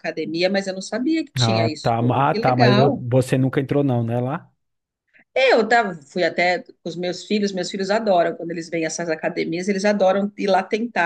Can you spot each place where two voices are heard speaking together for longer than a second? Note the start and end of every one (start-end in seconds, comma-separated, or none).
1.4-3.0